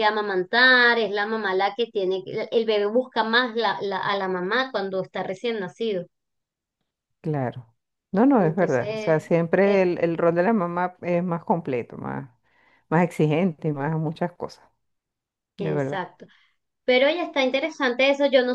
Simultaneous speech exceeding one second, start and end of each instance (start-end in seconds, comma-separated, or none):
8.4-9.9